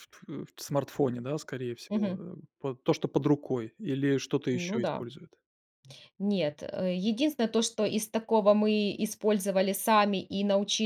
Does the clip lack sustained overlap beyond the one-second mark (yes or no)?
yes